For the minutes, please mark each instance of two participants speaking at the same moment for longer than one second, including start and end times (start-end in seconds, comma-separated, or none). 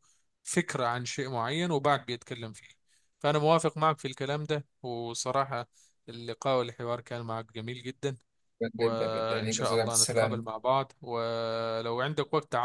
8.8-10.5